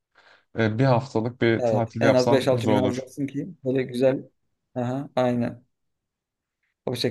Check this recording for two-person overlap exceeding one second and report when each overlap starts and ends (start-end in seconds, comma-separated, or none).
1.6-3.1